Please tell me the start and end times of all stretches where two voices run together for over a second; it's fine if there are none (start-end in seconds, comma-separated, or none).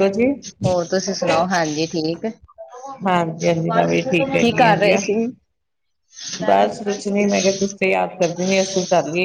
none